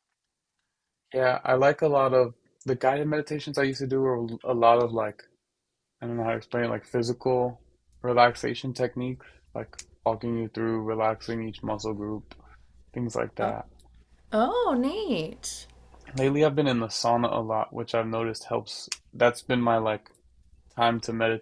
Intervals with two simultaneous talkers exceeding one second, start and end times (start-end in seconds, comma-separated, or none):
none